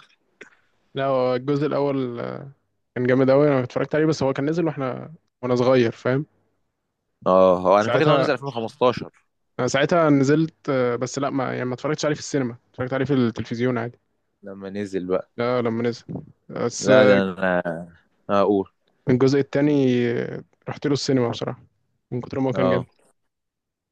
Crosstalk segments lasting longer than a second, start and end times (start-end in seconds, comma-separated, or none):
none